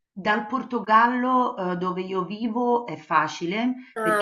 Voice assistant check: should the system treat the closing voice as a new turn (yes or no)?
no